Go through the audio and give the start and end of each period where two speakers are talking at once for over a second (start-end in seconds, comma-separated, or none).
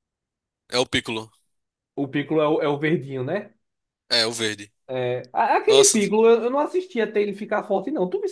none